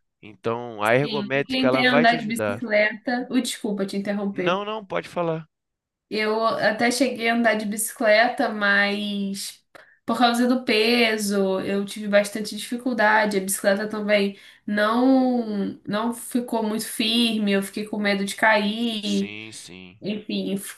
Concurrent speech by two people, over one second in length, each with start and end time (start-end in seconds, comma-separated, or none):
1.0-2.6